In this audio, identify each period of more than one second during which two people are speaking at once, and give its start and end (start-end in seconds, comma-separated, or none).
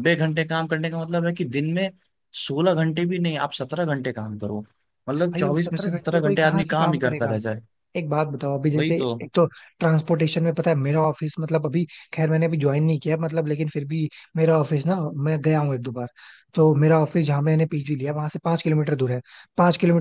5.2-7.4